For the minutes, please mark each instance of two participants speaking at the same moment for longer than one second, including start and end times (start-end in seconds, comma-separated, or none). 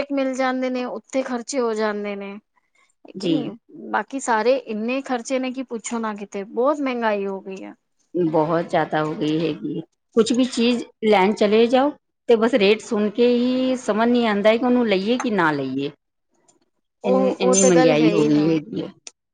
17.1-18.6